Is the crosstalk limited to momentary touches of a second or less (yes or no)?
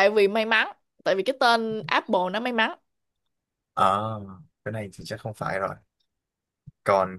yes